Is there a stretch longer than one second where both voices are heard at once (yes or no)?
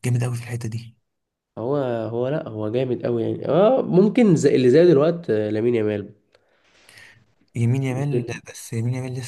no